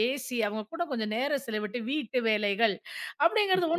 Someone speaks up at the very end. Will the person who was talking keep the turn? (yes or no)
yes